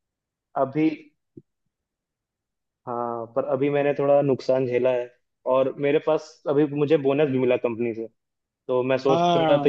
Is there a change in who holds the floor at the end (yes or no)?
no